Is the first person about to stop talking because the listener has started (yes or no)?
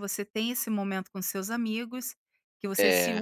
no